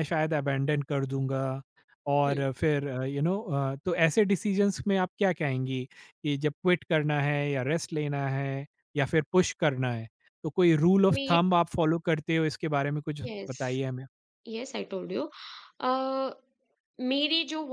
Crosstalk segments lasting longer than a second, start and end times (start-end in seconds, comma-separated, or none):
none